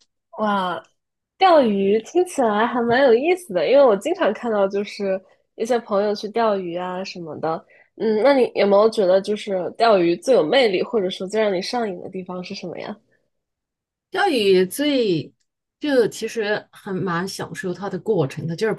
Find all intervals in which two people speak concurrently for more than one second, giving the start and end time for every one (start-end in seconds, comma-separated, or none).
none